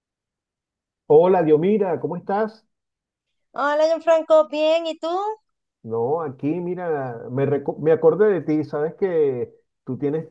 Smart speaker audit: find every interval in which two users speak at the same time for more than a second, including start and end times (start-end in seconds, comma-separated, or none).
none